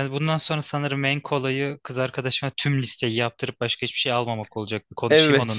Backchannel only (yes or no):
no